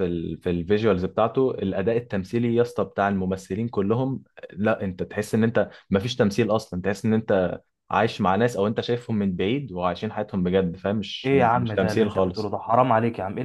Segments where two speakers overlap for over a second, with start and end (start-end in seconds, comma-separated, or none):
11.2-12.6